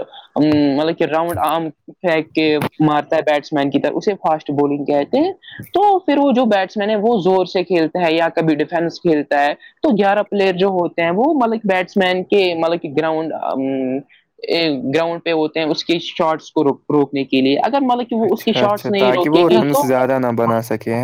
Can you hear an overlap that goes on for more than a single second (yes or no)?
yes